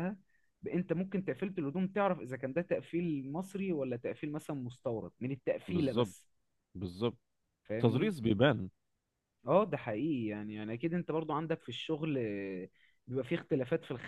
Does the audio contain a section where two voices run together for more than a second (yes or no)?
no